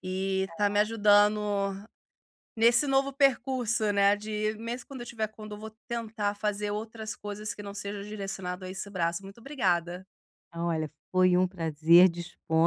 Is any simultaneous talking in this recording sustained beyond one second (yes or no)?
no